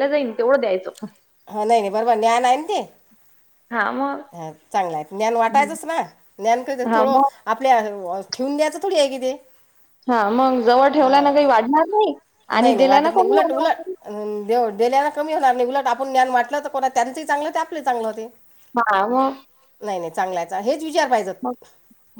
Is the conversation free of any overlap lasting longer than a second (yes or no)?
yes